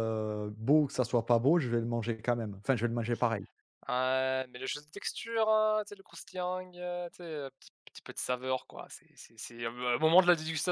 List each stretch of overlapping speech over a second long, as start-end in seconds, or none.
none